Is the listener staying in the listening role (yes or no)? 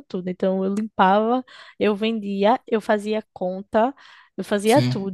yes